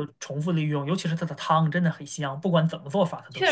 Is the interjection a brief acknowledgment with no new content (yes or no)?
no